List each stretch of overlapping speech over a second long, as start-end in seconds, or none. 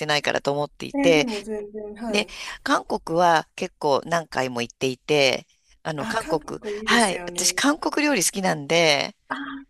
6.0-7.6